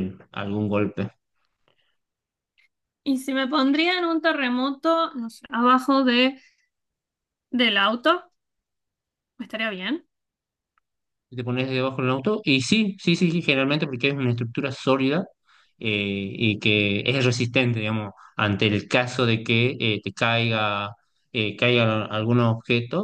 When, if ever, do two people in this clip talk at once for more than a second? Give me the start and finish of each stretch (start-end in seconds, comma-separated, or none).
none